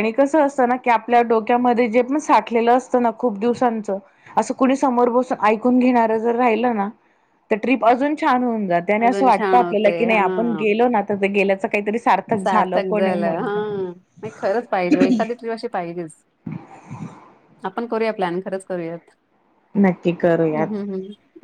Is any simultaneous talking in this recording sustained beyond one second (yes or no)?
yes